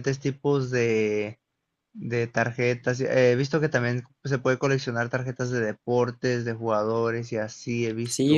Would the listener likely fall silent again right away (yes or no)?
no